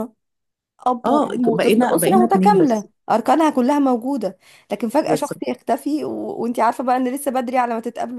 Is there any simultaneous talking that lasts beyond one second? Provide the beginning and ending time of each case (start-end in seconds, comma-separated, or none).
1.1-2.9